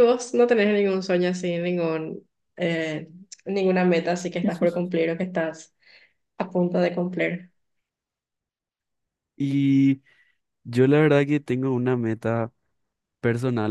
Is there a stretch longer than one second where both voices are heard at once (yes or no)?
no